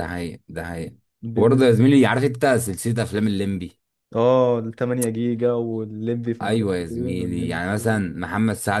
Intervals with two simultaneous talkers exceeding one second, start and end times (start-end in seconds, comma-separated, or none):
6.4-8.2